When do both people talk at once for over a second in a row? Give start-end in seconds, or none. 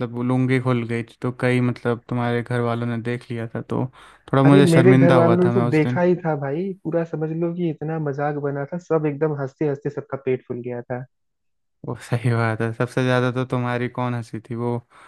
4.5-6.0